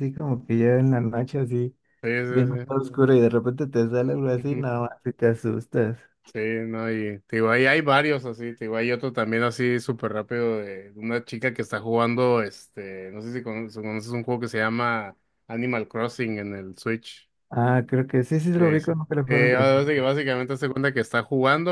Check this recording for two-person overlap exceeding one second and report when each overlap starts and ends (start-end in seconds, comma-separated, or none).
18.6-20.0